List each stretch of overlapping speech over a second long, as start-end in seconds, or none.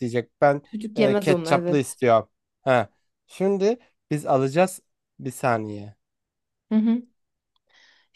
0.6-2.0